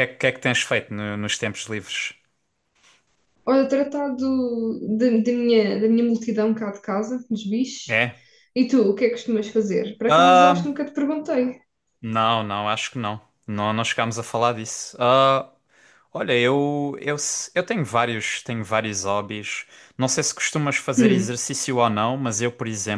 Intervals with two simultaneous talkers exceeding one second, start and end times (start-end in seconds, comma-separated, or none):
none